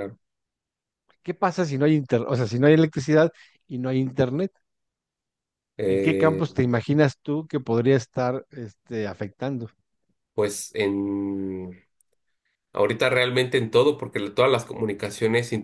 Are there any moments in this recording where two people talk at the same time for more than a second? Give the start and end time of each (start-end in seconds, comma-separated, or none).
none